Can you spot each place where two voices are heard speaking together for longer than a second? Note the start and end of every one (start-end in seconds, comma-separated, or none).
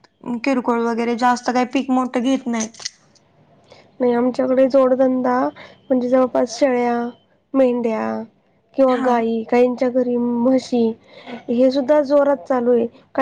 none